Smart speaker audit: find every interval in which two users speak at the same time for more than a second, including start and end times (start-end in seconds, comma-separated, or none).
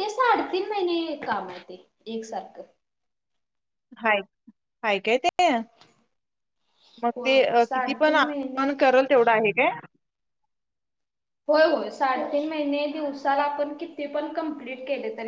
7.2-8.8